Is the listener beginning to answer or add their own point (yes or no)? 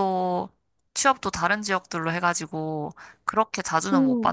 no